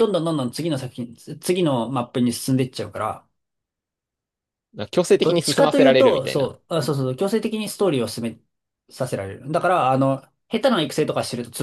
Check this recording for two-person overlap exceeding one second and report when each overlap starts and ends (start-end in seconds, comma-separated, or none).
5.2-6.6